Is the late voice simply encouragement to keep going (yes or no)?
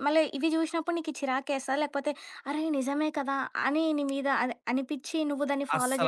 no